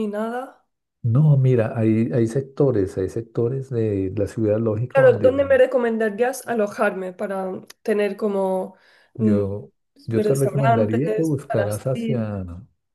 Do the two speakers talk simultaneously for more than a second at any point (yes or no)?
yes